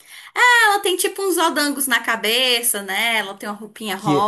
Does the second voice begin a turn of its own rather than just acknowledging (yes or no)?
yes